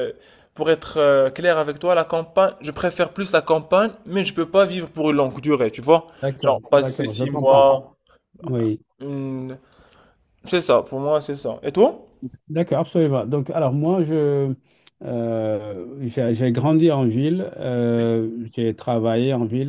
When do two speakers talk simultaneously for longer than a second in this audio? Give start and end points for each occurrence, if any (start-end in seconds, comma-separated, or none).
6.4-7.6